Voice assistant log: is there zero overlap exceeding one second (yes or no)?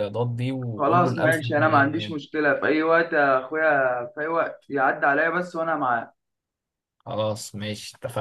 no